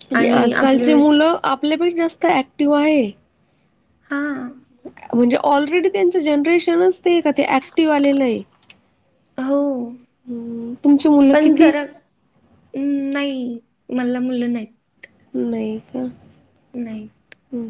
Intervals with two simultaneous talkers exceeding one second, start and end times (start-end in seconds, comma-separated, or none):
none